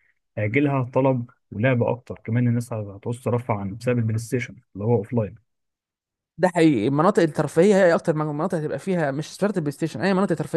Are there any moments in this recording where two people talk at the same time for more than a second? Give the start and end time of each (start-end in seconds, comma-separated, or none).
none